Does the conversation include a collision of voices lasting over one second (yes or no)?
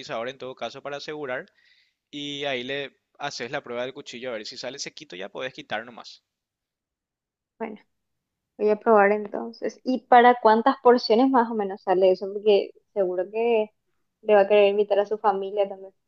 no